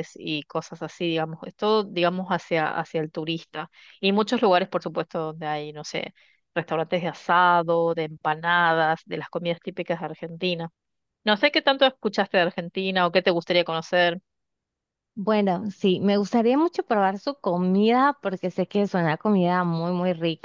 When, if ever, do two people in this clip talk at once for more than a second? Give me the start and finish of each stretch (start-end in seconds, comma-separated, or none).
none